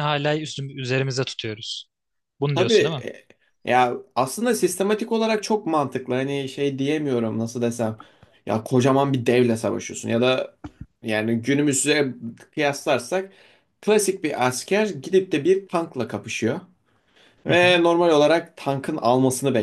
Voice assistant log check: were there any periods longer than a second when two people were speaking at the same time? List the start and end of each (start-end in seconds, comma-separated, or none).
none